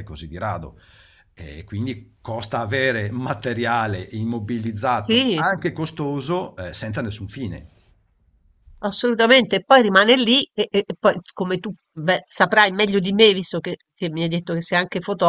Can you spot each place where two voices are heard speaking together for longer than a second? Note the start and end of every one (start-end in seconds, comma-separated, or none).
none